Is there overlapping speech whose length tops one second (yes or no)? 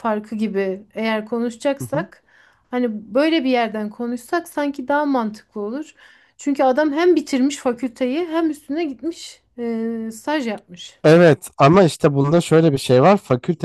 no